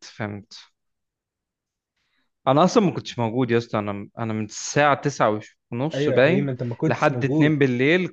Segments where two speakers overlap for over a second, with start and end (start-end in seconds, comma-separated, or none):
5.9-7.6